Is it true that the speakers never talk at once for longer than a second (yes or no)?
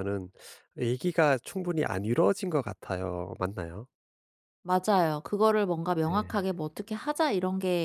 yes